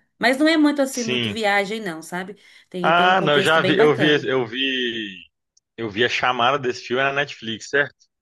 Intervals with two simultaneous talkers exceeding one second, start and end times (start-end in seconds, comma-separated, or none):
2.8-4.3